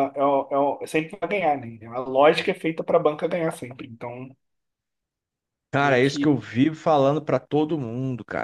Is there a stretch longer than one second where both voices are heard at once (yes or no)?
no